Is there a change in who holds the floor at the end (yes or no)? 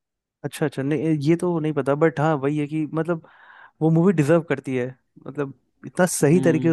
no